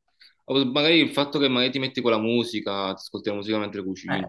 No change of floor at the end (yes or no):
no